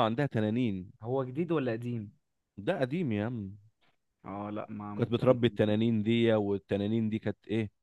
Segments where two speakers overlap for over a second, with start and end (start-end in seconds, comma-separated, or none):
none